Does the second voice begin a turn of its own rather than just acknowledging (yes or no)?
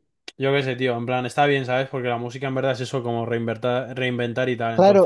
yes